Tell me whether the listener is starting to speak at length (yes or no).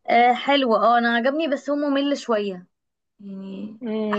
yes